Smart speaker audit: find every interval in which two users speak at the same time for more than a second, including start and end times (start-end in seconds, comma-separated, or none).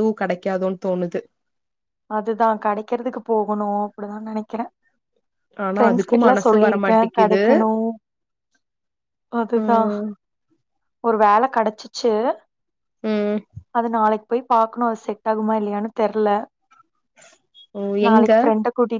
5.8-7.4